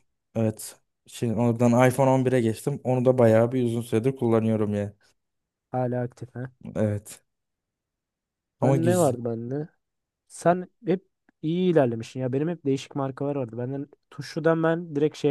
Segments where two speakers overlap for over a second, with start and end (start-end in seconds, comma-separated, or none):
none